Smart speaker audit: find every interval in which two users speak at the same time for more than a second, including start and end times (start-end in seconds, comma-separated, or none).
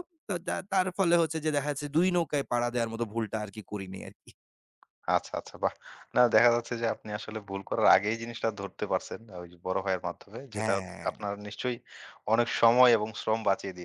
none